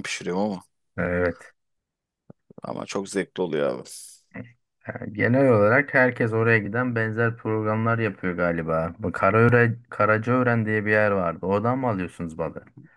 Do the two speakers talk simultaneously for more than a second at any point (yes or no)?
no